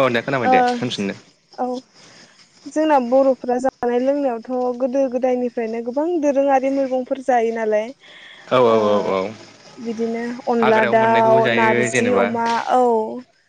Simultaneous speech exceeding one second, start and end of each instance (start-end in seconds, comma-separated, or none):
10.6-12.2